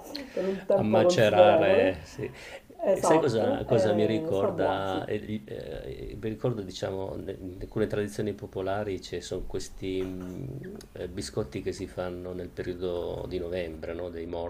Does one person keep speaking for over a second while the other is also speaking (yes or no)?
yes